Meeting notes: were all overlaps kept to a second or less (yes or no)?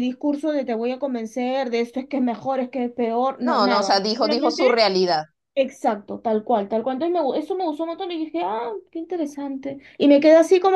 no